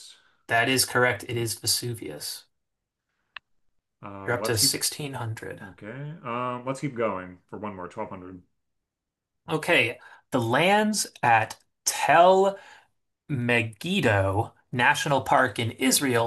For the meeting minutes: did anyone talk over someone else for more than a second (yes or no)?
no